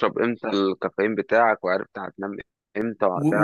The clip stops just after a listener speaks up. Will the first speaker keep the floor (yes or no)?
no